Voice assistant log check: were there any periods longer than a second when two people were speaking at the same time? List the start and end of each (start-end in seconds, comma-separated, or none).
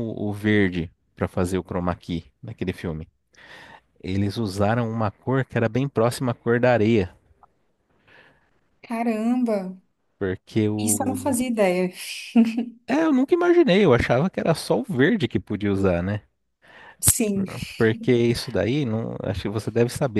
none